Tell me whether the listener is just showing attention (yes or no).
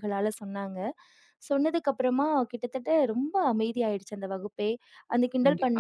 no